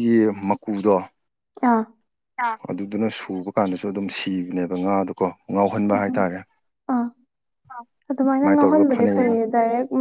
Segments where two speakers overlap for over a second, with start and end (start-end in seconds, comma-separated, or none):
8.1-9.3